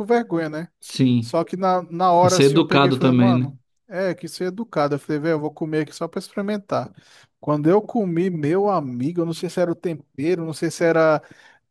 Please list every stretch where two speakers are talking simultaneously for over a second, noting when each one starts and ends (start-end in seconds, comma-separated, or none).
2.2-3.5